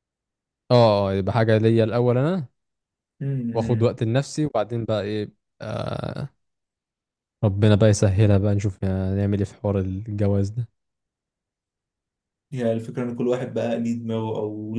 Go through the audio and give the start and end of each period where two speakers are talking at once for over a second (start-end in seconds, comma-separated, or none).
none